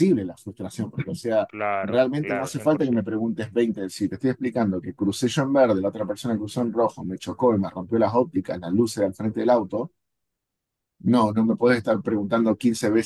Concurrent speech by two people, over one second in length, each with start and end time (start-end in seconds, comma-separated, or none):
1.5-3.1